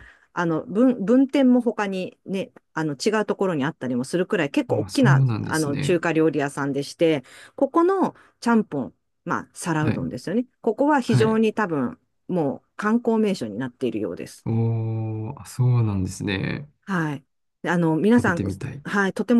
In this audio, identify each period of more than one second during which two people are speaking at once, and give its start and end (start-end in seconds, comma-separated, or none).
4.7-6.0